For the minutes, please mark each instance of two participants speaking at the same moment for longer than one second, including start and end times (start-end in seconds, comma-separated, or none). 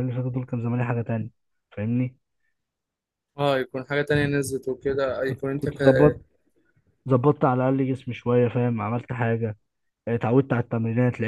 none